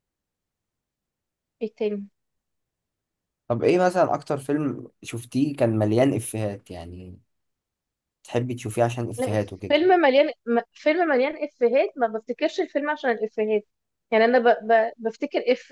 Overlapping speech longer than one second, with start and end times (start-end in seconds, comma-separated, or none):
none